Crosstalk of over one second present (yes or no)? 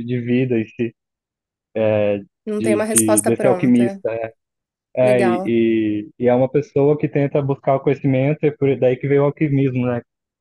yes